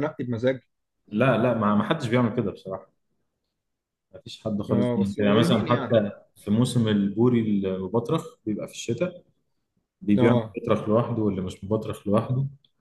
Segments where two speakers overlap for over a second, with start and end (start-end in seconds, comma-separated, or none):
4.7-5.9